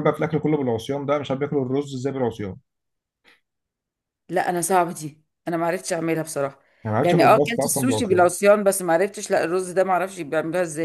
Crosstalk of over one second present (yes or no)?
yes